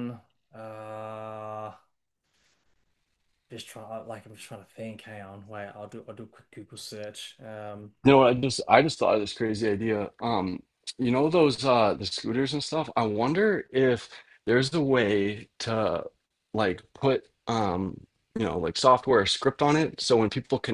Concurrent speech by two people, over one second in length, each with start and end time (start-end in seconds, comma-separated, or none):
none